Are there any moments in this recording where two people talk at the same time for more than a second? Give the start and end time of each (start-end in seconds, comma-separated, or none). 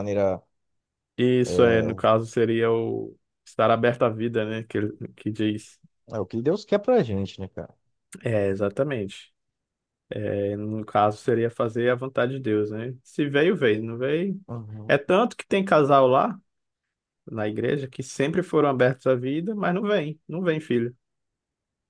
none